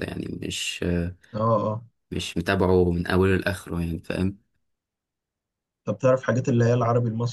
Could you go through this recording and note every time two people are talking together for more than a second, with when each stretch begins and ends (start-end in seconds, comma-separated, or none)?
none